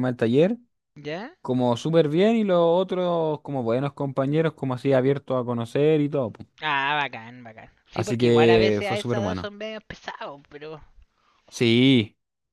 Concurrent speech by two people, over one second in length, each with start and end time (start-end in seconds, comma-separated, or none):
7.9-9.5